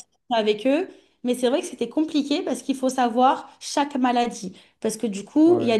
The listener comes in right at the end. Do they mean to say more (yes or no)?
no